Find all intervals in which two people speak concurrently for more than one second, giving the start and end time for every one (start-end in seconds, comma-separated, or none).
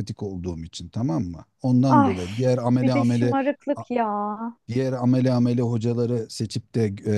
none